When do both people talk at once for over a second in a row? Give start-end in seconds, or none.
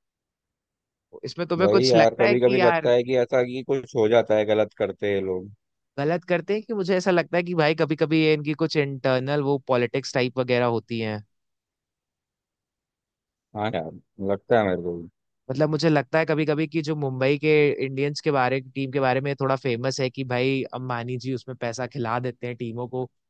1.6-2.9